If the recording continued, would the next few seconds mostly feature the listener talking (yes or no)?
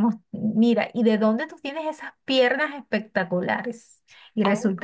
no